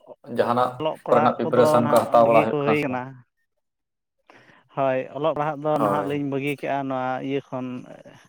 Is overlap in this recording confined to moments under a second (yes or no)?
no